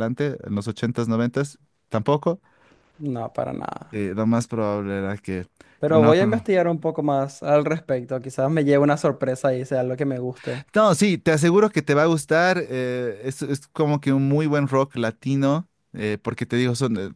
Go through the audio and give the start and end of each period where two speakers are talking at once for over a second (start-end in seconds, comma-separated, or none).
none